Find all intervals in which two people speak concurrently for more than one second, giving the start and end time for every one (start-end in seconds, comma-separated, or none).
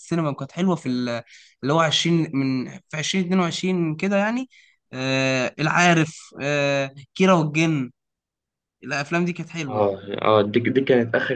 none